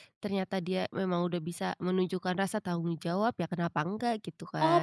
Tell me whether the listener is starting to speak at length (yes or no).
yes